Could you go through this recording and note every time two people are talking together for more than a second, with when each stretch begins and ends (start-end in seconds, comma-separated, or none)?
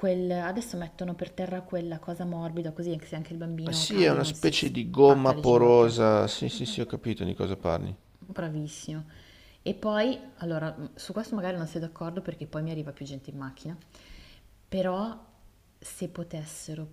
3.6-5.9